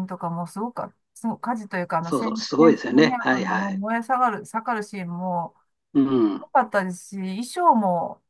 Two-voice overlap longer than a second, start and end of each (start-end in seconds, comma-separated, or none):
2.0-3.8